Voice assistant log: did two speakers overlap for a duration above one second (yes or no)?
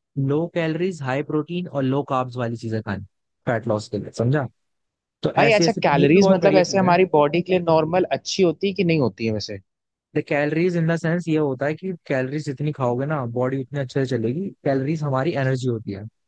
yes